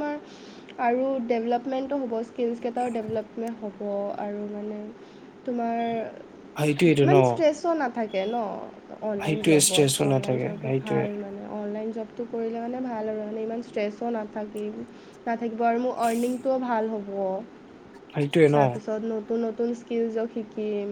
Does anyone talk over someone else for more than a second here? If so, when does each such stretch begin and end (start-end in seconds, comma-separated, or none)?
9.2-11.1